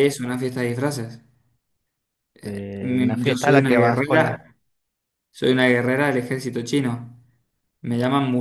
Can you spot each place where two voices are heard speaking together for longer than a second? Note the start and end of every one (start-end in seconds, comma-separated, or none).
2.8-4.4